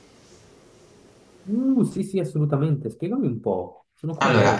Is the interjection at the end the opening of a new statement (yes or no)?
yes